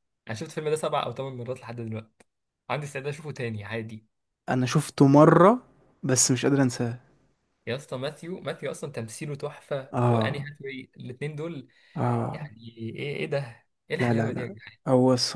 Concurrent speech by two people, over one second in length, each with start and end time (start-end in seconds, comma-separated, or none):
none